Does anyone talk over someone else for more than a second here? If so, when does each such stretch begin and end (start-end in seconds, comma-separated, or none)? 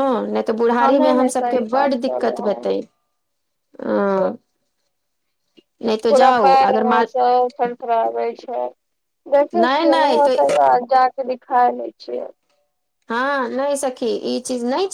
0.8-2.7